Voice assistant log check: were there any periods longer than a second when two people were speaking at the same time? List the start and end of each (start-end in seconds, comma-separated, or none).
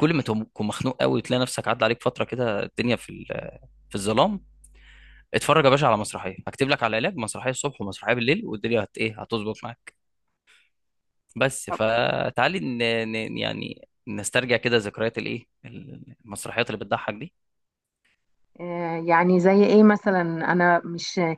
none